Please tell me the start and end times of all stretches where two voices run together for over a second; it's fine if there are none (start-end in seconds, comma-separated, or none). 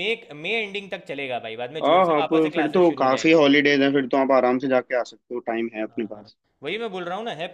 1.8-3.4